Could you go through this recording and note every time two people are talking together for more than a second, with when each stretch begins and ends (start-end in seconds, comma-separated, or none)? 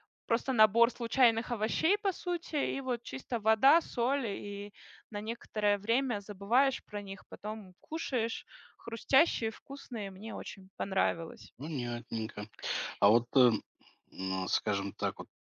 none